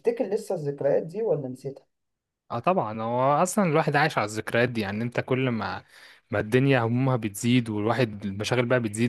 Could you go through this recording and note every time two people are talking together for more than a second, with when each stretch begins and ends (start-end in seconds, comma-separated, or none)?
none